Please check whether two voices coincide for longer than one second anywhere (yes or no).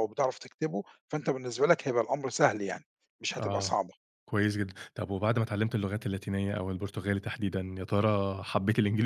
no